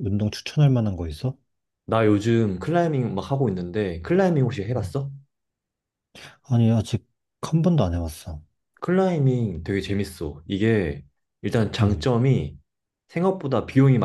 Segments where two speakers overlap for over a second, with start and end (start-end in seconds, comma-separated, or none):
none